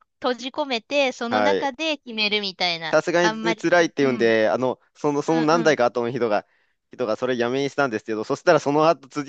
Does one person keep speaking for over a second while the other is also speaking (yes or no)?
yes